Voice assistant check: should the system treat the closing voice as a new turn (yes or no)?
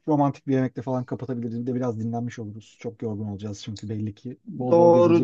yes